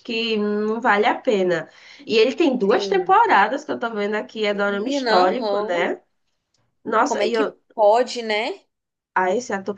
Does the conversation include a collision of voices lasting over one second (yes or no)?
yes